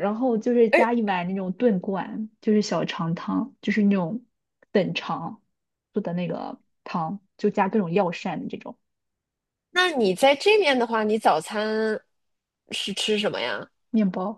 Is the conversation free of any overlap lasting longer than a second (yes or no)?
yes